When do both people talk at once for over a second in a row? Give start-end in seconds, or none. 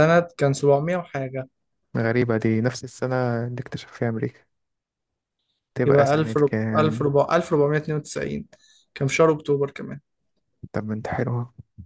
5.8-7.1